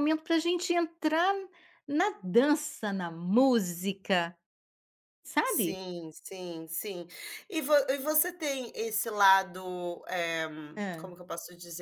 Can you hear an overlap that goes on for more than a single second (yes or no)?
no